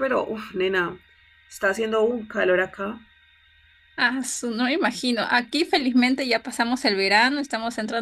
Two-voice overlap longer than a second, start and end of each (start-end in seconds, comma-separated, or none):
none